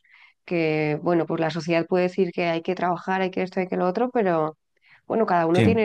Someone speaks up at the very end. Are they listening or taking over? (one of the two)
listening